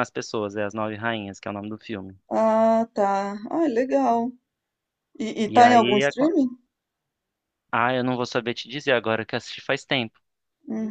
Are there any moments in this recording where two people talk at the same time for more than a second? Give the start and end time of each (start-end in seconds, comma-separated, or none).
none